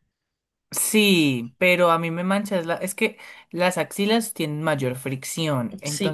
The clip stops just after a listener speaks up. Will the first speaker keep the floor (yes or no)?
yes